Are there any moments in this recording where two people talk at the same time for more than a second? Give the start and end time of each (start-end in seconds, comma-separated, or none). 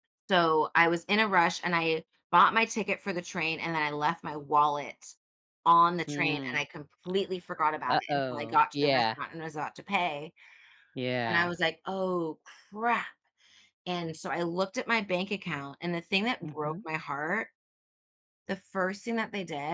7.9-9.2